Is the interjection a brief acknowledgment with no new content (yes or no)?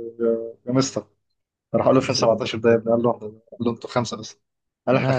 yes